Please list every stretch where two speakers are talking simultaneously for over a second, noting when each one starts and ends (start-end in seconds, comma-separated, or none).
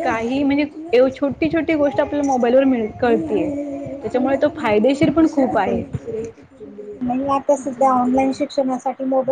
none